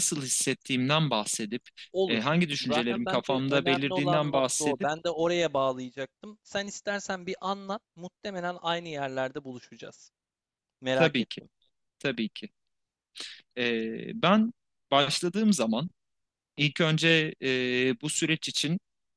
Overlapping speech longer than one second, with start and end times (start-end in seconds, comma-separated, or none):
2.1-4.9